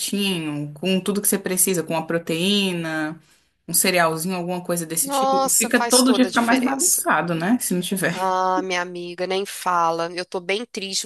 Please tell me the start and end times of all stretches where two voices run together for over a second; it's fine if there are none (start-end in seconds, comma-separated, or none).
5.0-7.0